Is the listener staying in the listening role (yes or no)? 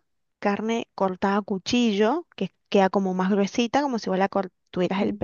yes